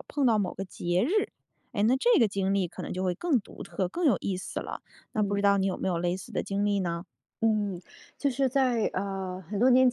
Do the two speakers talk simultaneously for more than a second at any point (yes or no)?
no